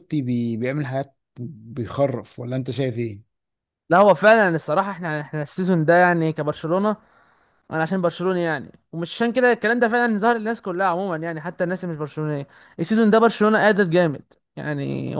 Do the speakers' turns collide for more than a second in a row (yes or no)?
no